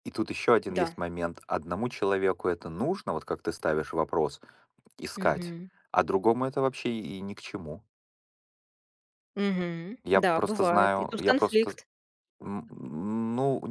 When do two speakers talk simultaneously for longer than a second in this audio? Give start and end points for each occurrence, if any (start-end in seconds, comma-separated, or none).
10.0-11.7